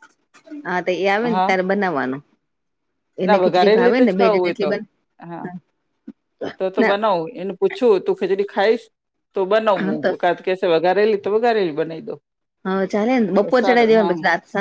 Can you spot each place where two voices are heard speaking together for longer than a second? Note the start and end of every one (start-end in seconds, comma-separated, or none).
3.2-4.8